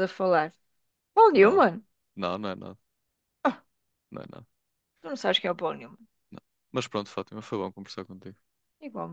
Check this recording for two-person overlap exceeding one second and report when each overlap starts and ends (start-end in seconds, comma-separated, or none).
none